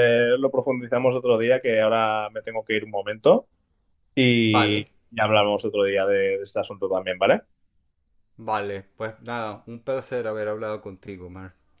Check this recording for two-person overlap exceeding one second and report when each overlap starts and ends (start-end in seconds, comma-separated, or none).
none